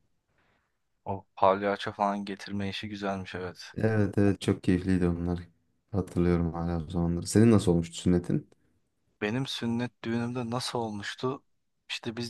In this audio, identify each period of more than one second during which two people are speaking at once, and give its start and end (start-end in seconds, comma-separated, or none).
none